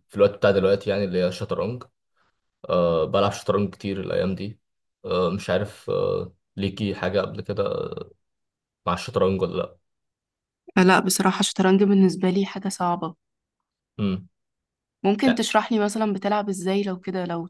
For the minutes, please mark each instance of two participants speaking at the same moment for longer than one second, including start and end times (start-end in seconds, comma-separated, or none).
none